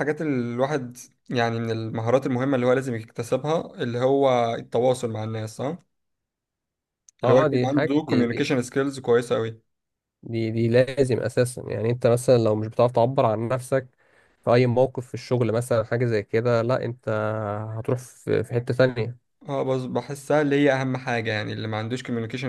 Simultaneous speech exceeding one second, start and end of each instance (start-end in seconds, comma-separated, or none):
7.2-8.5